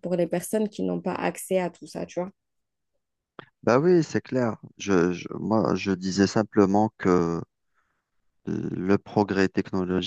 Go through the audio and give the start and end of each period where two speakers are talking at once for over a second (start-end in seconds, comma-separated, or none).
none